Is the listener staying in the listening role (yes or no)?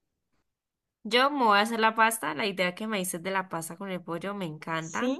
yes